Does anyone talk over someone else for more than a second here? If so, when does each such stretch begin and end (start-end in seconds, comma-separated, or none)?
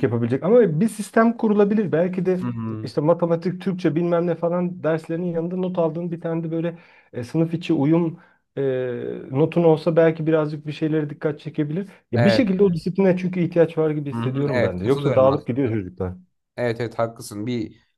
14.1-15.5